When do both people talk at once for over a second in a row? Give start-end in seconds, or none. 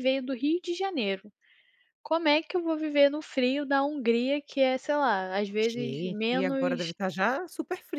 5.6-6.9